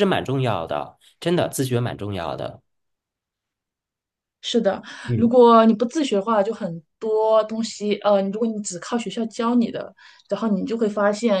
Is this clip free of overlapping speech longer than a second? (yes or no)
yes